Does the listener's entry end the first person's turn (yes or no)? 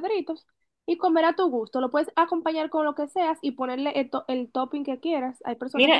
yes